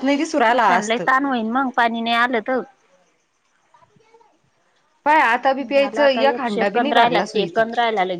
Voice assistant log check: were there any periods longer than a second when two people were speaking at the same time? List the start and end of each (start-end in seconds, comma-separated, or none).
5.7-7.6